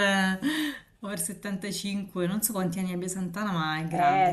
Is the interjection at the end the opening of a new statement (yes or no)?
yes